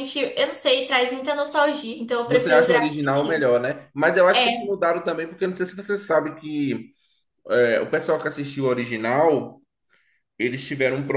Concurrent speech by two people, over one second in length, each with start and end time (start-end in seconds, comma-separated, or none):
2.3-3.5